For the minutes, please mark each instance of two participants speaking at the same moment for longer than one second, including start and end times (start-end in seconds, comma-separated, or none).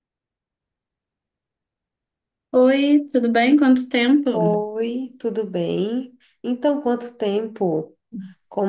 none